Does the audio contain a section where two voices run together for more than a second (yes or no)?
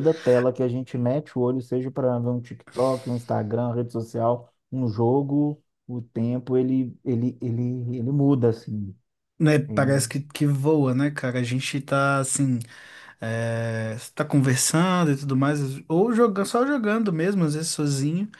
no